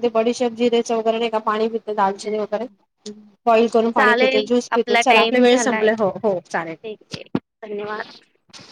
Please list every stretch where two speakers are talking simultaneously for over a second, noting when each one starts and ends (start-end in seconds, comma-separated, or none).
4.0-6.7